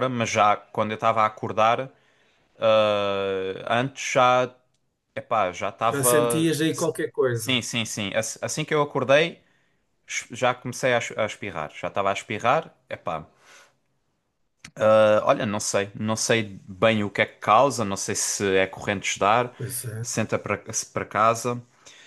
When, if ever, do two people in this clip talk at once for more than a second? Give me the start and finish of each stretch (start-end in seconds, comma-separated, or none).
none